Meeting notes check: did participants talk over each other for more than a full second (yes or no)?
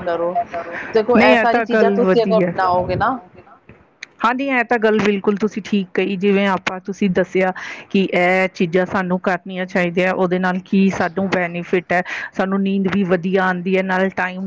yes